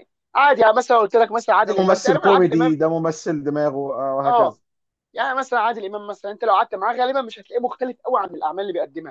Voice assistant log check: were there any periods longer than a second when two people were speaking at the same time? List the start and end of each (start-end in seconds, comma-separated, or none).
1.6-2.8